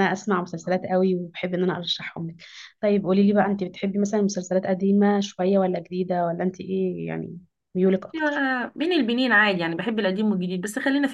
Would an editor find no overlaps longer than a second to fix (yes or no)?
yes